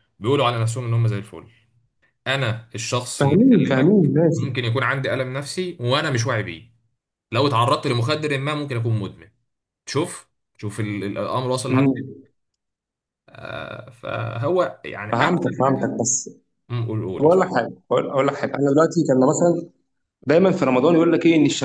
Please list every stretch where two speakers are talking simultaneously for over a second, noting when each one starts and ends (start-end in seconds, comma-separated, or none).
3.2-4.5